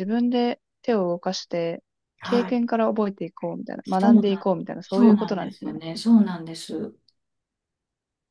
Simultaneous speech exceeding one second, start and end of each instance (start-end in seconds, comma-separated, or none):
3.8-5.7